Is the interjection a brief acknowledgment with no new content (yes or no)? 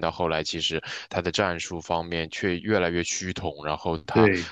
yes